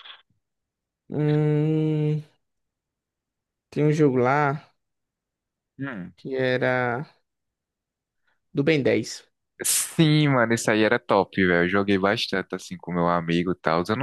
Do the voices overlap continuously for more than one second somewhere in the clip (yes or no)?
no